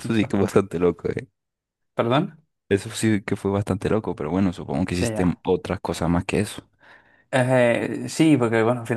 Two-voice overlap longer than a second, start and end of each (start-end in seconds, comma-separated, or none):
none